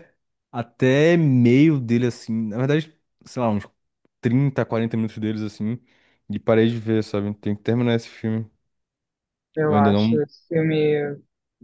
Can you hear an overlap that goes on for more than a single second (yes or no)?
no